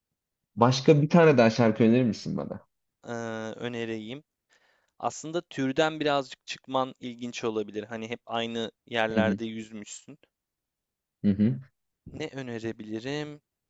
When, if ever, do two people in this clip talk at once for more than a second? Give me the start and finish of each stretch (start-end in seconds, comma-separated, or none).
none